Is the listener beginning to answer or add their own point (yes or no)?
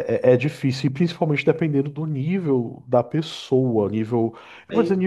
no